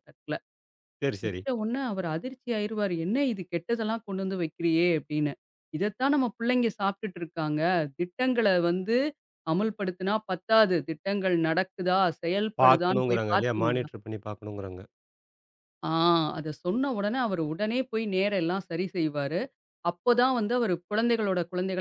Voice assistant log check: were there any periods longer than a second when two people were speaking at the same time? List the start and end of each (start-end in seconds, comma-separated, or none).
12.6-13.9